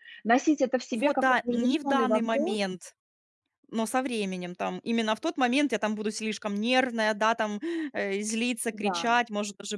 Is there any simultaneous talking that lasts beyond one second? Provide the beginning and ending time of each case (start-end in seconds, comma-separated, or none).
0.9-2.6